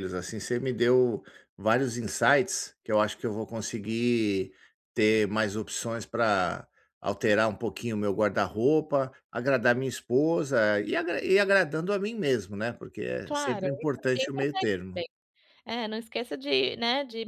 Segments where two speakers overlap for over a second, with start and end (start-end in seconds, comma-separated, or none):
13.2-15.0